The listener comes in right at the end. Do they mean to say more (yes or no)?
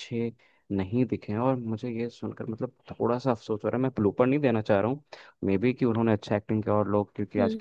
no